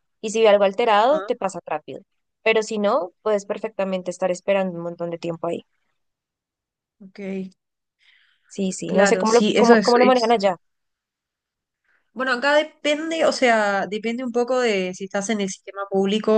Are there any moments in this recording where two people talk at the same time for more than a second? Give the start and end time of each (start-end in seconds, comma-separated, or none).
8.9-10.3